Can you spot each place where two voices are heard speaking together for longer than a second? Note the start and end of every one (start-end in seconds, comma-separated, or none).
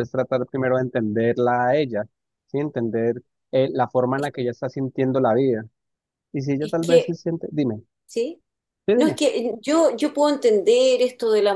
none